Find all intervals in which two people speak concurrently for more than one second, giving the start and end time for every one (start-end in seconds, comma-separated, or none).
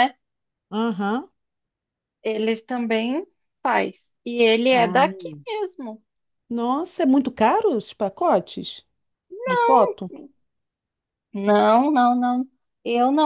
none